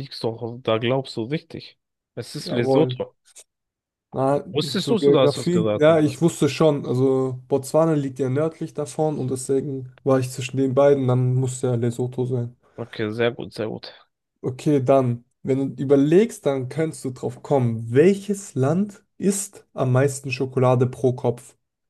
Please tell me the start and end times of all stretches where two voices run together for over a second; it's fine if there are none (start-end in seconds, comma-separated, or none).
4.8-6.0